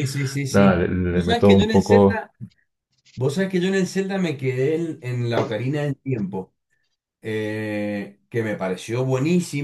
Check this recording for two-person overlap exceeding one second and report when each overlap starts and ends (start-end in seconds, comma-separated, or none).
0.5-2.2